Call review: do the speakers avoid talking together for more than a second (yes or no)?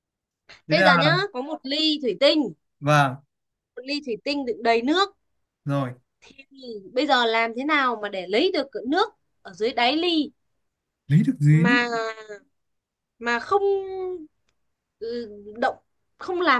yes